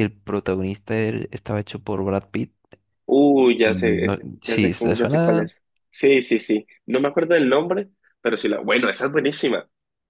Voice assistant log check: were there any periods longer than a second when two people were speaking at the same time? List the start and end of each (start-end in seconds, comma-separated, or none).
3.6-5.5